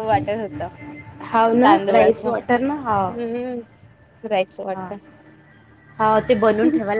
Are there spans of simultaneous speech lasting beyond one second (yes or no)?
yes